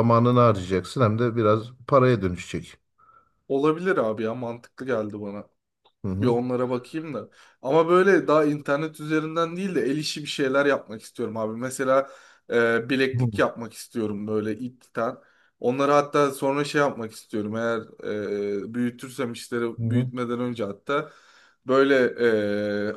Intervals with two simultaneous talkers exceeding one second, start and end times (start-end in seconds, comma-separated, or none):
none